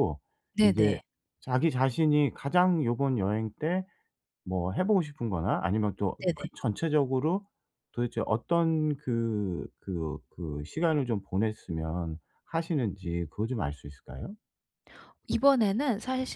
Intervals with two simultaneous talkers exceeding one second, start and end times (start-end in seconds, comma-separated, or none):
none